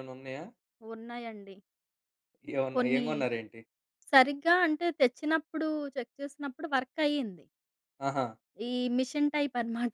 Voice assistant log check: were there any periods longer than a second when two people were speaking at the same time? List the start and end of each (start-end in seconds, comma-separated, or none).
none